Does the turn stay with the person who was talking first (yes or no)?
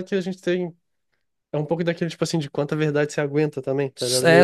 no